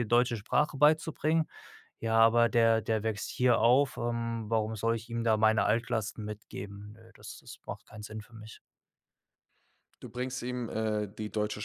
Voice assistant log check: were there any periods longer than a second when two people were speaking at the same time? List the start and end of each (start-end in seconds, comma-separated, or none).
none